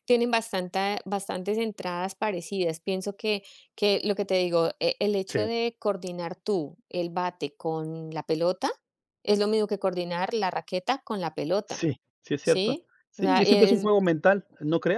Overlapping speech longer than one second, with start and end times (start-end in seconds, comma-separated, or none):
12.4-13.9